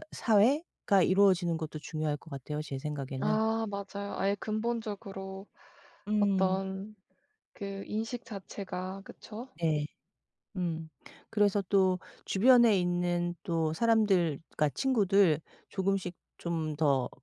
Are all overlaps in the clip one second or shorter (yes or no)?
yes